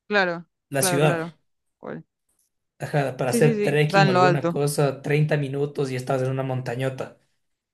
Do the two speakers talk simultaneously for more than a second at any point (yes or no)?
yes